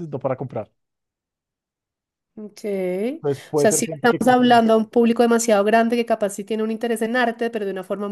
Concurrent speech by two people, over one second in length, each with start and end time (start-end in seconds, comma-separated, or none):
3.1-4.6